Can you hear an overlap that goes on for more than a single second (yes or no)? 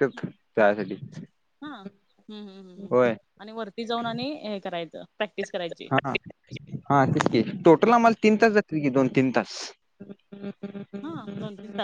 no